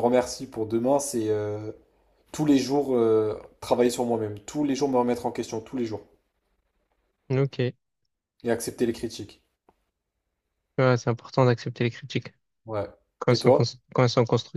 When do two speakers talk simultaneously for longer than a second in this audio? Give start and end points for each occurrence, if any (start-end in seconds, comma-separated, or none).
none